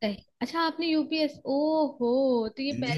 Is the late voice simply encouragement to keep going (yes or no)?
no